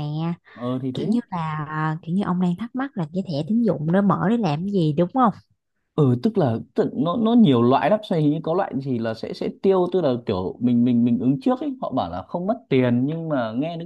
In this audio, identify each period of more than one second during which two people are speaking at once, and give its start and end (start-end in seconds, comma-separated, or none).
none